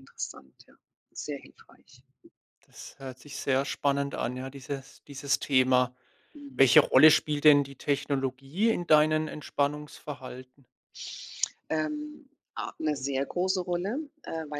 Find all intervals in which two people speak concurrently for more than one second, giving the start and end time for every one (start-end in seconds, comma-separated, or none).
none